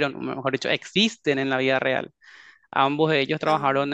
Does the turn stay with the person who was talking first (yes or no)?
yes